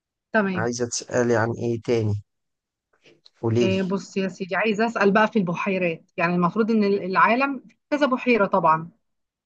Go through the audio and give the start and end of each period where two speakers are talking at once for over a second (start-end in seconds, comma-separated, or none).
none